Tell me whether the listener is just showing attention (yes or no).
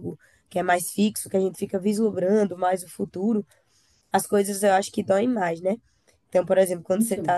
yes